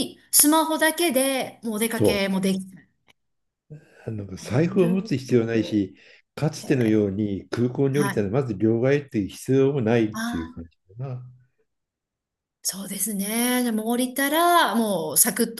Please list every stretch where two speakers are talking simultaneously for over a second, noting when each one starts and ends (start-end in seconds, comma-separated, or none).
4.4-5.8